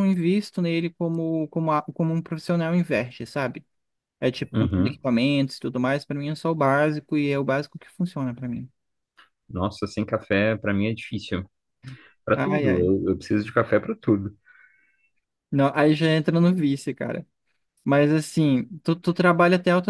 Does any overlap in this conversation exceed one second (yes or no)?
no